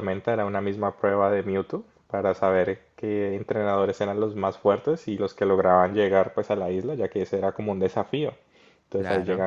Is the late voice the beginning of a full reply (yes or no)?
no